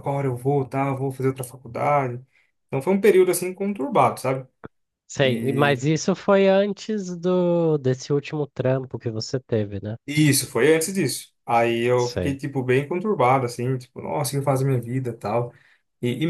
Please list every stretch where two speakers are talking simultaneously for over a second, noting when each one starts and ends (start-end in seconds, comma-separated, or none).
none